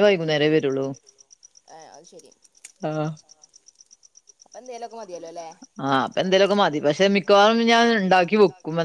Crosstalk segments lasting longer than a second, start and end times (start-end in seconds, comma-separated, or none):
none